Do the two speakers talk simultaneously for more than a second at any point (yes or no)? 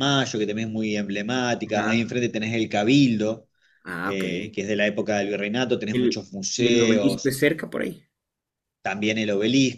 yes